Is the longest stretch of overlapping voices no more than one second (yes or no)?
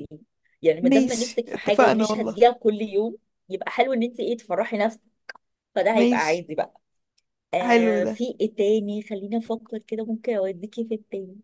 no